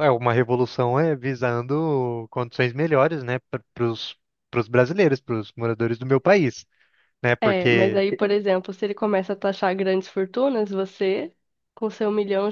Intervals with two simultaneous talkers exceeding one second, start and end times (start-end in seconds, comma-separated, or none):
none